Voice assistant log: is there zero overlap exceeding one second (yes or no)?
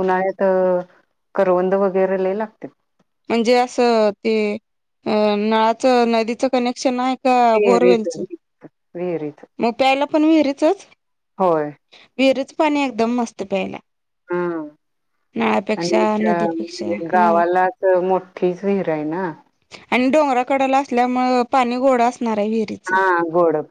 no